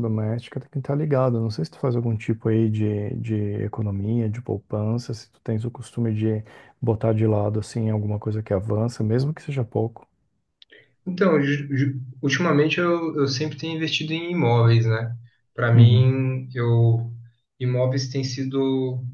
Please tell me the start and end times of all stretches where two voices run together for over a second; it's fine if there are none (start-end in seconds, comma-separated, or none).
none